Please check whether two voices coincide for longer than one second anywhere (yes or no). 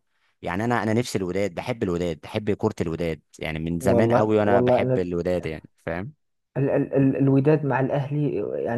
yes